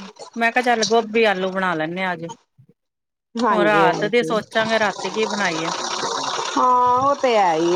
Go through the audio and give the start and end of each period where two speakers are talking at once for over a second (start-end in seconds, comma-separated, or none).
none